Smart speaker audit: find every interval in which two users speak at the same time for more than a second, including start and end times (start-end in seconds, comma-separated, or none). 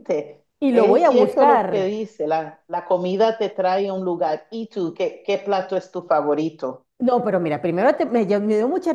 0.6-1.9